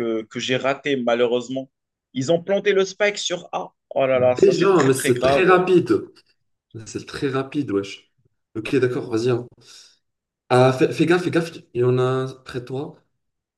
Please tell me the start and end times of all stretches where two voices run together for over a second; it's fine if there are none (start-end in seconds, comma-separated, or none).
4.1-5.5